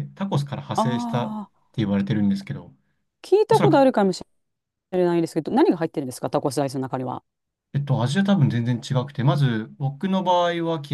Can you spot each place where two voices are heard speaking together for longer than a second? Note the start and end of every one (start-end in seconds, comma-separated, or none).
none